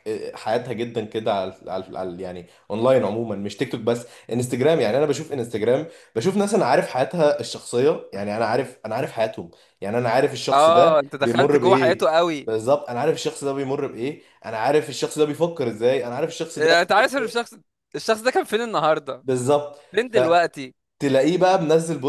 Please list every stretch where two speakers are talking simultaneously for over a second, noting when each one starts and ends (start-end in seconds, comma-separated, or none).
10.5-12.5